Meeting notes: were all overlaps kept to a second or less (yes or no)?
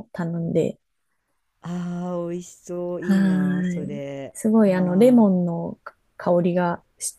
no